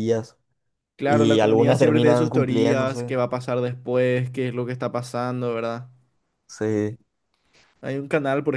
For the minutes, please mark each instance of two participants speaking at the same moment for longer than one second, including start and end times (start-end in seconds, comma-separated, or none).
1.0-3.2